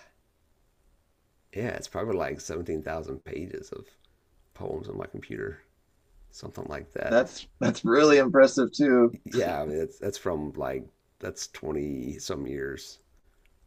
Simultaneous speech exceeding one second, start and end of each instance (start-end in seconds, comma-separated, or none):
none